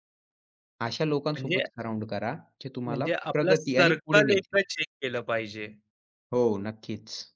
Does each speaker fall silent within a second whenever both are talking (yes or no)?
no